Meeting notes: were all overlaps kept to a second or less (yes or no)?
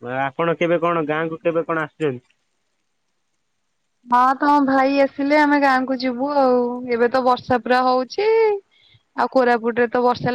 yes